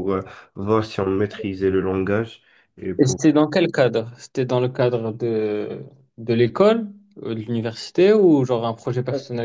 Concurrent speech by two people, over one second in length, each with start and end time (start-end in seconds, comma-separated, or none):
none